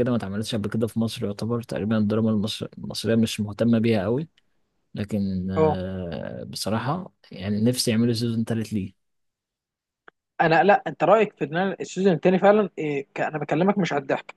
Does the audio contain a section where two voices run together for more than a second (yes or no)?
no